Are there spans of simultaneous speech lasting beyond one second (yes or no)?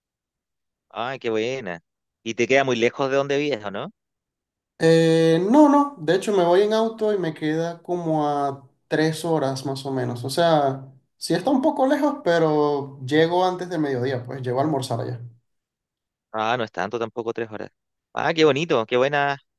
no